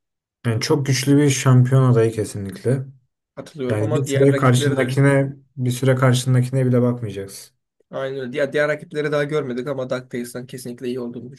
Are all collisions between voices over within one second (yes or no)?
no